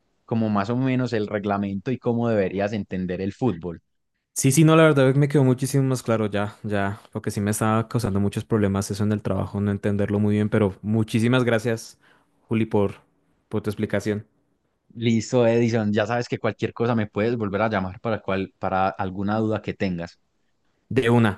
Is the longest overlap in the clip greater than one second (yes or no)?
no